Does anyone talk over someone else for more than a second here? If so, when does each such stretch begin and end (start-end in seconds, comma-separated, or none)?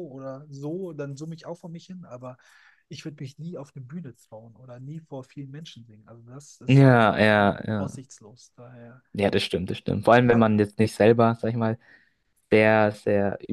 6.7-8.0